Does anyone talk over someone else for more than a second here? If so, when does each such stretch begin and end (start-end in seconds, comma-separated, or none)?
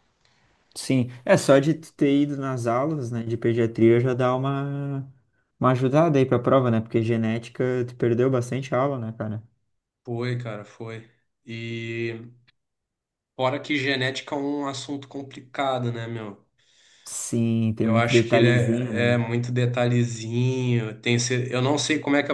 17.8-19.2